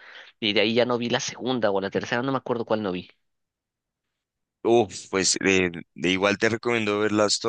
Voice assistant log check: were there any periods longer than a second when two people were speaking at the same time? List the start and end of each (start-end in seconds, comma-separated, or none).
none